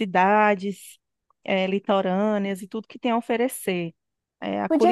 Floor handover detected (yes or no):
yes